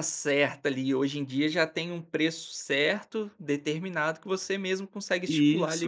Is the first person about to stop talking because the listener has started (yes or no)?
yes